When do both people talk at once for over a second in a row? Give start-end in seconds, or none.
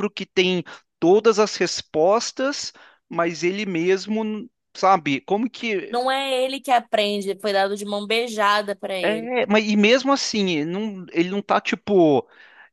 none